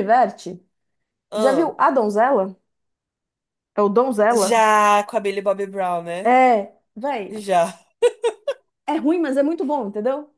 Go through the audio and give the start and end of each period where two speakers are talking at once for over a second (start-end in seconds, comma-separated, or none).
none